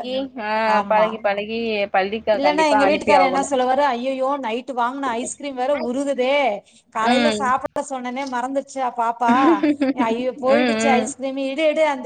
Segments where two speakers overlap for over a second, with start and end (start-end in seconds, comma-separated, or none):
none